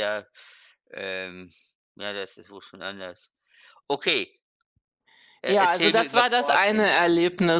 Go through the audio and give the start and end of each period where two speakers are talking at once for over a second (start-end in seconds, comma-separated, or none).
5.5-6.9